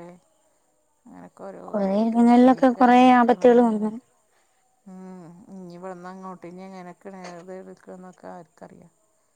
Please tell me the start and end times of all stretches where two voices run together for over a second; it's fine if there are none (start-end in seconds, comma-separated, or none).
2.1-3.9